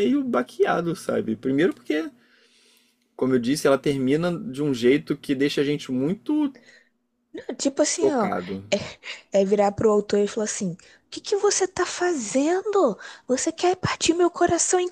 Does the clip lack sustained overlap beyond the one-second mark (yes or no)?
yes